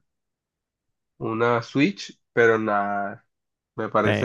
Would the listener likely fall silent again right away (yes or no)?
yes